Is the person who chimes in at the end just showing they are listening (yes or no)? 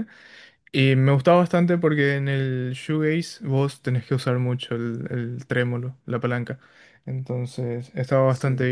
no